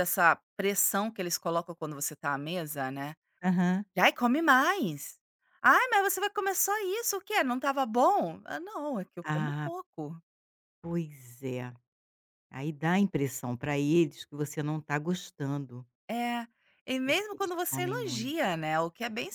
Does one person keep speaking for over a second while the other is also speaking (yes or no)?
yes